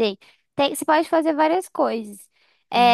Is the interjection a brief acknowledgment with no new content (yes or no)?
yes